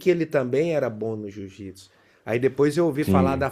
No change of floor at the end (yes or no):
yes